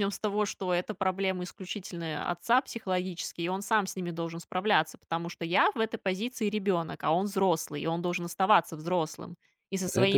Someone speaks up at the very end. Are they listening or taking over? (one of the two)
listening